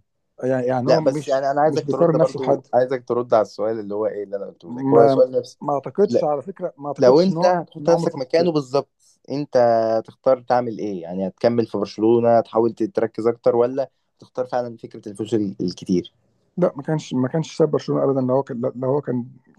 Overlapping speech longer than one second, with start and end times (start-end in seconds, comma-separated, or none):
0.9-2.7, 7.0-8.5